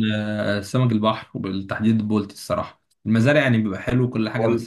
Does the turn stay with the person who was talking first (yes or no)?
yes